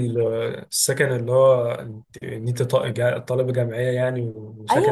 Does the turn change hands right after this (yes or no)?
yes